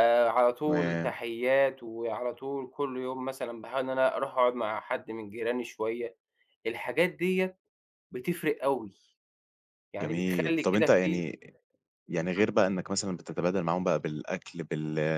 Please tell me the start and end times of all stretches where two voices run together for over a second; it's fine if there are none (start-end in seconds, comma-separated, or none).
10.0-11.2